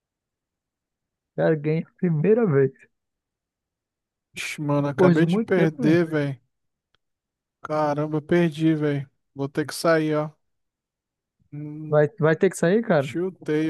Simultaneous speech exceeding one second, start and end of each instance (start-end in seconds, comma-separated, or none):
4.8-6.0